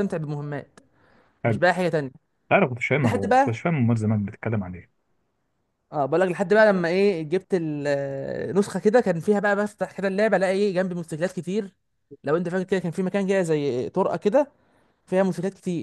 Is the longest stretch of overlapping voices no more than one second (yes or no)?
yes